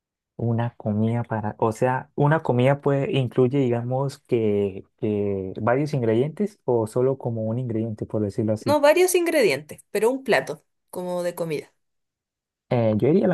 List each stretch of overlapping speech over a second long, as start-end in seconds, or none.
none